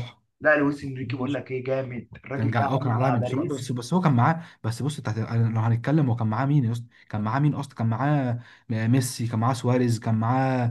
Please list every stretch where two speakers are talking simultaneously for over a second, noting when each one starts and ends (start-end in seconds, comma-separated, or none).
2.3-3.7